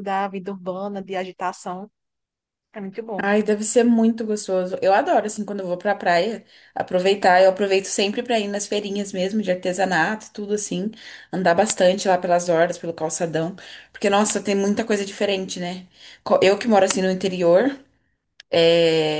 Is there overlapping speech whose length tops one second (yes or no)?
no